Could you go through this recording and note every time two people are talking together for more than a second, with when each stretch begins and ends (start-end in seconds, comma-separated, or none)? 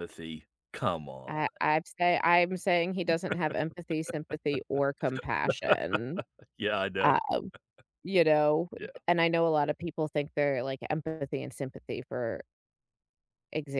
none